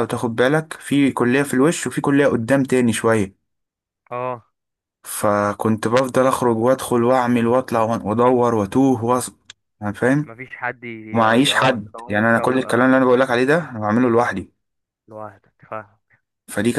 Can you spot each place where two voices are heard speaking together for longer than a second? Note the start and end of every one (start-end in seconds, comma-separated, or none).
11.4-12.9